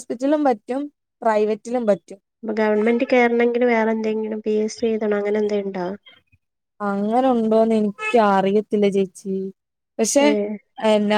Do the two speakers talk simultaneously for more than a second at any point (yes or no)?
no